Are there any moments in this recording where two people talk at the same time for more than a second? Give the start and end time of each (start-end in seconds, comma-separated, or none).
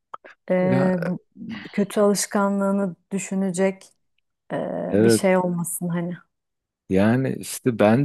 none